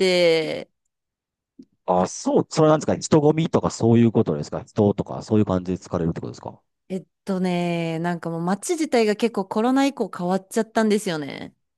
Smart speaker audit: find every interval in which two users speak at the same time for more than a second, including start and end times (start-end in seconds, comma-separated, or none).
none